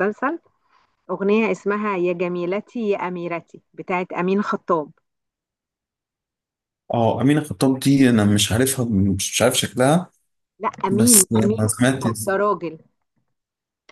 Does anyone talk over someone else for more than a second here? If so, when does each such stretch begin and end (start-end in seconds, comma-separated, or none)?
10.9-12.3